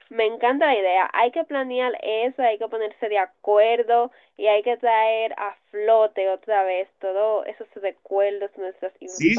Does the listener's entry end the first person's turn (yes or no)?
yes